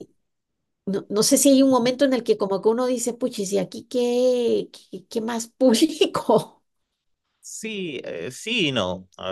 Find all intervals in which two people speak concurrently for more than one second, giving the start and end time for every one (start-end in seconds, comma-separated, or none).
none